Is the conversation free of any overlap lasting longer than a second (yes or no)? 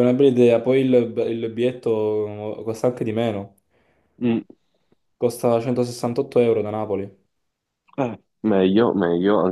yes